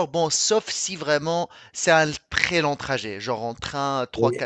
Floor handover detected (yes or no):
no